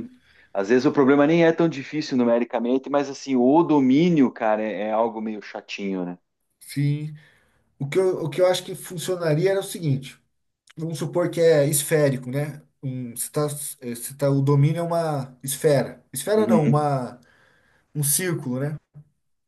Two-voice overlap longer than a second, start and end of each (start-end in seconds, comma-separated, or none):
none